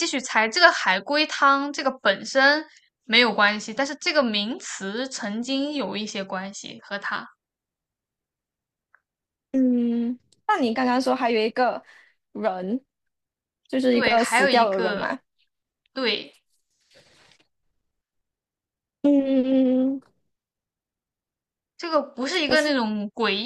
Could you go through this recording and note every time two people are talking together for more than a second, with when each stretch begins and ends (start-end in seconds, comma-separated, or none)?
13.9-15.2